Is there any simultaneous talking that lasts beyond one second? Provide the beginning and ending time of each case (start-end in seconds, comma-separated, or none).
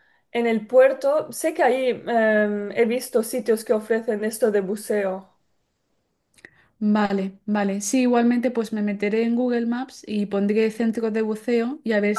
none